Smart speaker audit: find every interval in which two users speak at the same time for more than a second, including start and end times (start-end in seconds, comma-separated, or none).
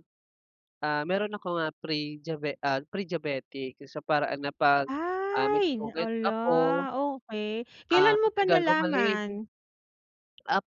5.4-6.9, 7.9-9.2